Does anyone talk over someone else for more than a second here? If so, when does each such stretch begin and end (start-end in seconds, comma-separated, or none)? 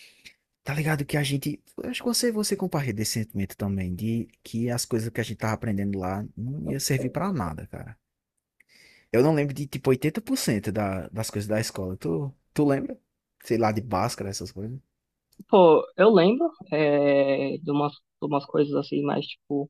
none